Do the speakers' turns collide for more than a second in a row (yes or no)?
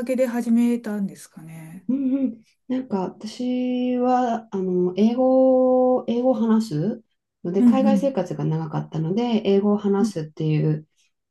no